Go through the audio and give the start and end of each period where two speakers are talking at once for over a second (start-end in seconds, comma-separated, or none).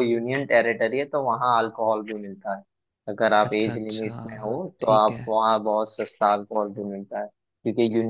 3.5-5.3